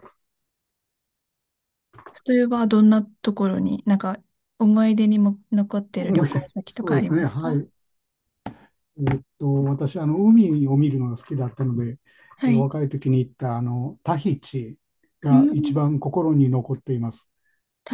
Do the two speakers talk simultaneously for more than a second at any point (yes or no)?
yes